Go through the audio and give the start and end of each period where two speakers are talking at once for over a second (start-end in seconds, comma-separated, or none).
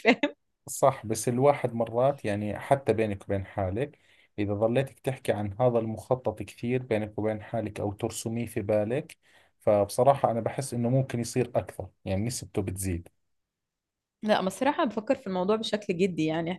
none